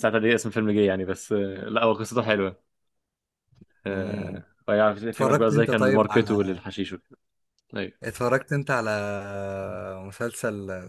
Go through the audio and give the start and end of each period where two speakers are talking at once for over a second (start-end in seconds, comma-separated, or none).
5.1-6.4